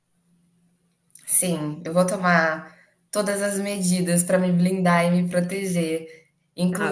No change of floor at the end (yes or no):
yes